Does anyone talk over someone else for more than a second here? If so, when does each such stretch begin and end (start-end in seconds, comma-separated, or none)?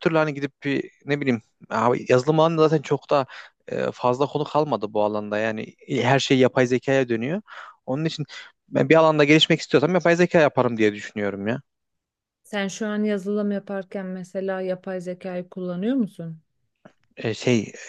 none